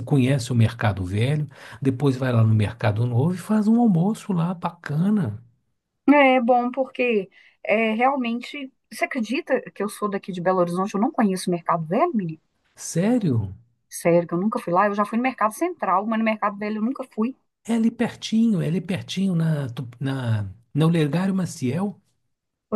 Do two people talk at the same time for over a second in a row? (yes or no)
no